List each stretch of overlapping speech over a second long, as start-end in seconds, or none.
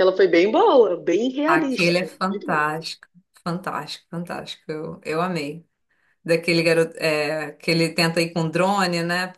1.5-2.8